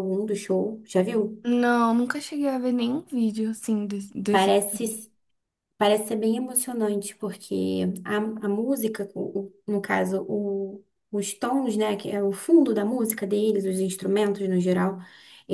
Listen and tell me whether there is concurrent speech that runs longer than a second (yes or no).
no